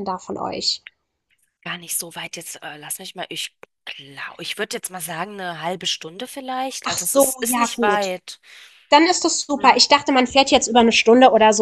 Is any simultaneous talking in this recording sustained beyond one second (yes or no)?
yes